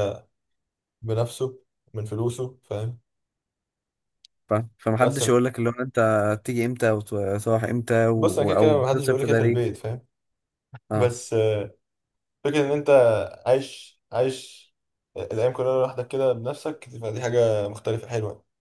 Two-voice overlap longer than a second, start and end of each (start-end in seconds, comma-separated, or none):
8.2-9.7